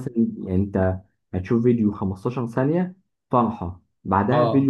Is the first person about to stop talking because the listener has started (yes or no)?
no